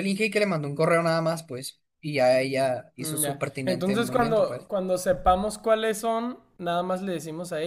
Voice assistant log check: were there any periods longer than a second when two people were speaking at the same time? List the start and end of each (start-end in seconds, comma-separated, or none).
3.0-4.7